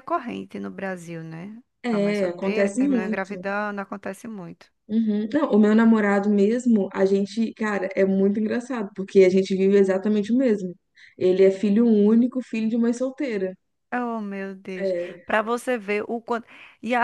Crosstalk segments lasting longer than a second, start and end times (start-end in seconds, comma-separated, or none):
1.8-3.5